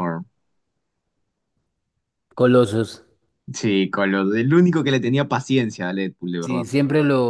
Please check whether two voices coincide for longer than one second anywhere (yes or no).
no